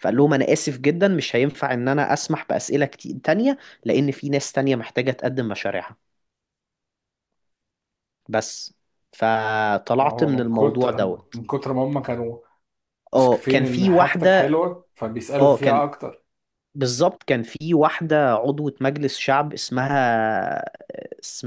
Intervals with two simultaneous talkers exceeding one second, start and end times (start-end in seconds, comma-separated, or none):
10.0-11.4, 13.2-14.6